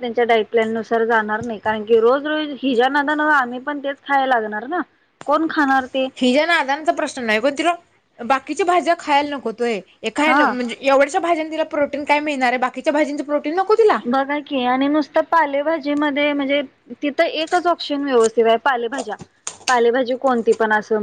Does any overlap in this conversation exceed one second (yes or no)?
no